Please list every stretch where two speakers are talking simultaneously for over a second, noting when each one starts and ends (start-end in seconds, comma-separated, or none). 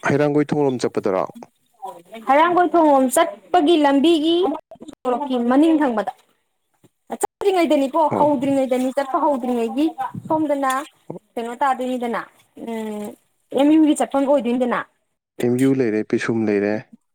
none